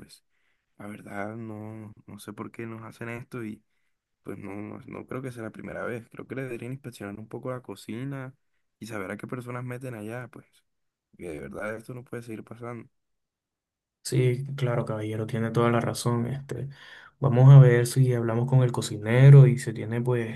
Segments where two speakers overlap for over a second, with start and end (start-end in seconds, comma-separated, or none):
none